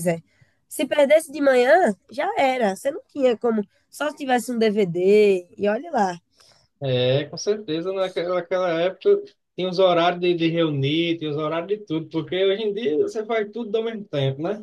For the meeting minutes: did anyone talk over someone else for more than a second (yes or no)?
no